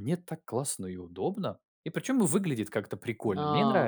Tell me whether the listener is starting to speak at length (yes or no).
yes